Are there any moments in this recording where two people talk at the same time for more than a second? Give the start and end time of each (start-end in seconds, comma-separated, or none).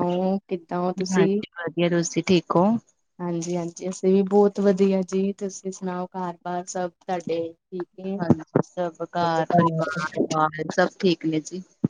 none